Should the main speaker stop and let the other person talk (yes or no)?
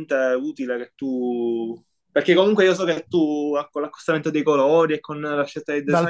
yes